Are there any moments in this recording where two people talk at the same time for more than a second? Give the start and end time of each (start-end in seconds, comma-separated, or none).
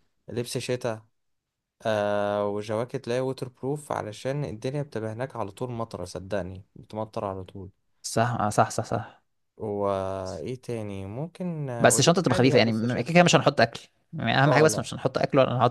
11.8-13.1